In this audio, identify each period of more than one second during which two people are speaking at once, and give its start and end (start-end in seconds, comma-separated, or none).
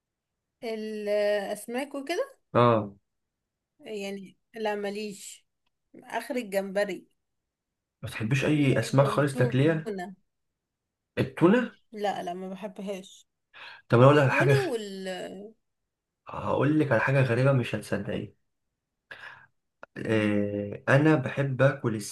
8.4-9.9